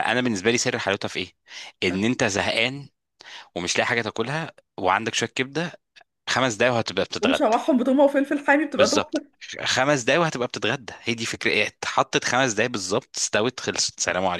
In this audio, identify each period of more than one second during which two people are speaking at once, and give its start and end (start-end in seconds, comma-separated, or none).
none